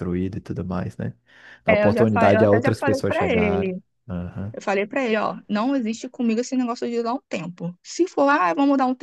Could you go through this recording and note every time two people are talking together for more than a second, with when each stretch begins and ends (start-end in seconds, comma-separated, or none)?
1.7-3.8